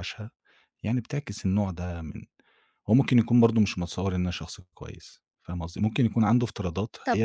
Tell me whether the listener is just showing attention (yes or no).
yes